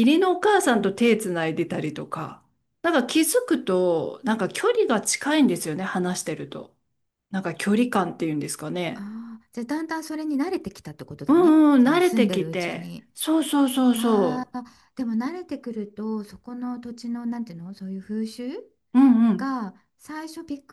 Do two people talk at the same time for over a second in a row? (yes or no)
yes